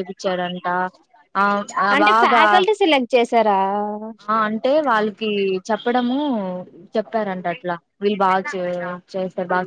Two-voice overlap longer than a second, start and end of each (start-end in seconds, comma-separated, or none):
none